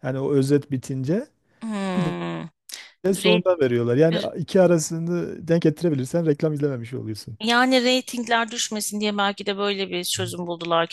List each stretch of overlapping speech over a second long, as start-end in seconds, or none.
none